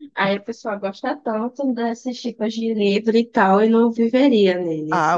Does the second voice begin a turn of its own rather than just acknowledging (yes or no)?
yes